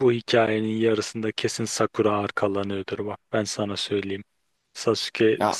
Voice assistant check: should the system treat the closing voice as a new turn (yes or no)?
no